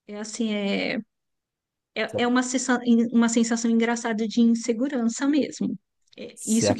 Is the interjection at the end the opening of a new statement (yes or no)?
no